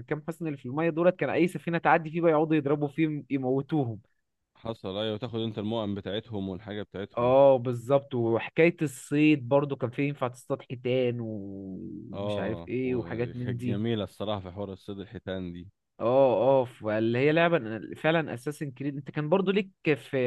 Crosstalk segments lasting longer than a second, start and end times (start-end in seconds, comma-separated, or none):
12.1-13.8